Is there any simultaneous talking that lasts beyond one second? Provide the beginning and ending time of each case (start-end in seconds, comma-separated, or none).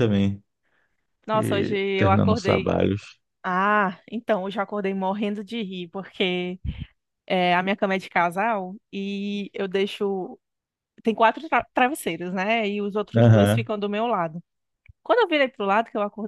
1.3-2.8